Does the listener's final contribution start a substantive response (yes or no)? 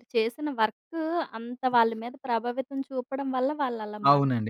yes